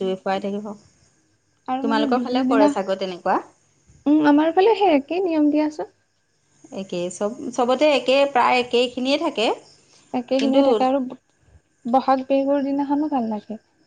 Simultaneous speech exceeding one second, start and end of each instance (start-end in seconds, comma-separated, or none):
1.8-3.4